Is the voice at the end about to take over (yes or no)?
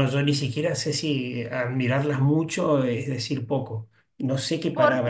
yes